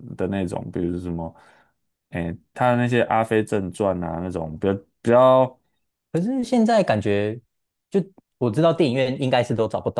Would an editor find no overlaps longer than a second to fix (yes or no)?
yes